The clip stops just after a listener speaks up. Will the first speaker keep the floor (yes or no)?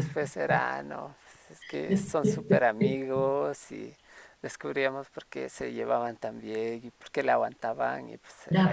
no